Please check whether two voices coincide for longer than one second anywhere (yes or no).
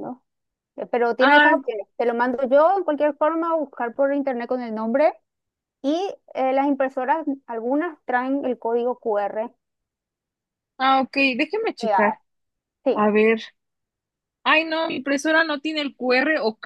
no